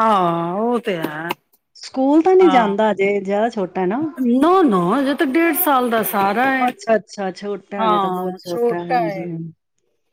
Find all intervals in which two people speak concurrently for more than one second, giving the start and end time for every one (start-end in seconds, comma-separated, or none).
none